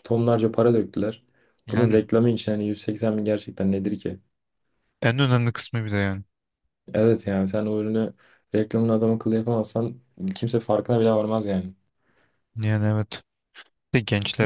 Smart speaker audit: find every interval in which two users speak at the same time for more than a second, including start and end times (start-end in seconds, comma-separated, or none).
none